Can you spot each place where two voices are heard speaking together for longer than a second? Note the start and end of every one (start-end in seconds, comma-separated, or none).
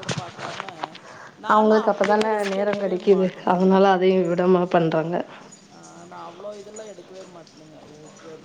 1.5-3.0